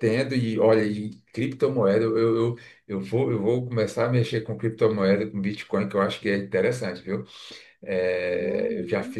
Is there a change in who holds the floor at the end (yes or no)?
yes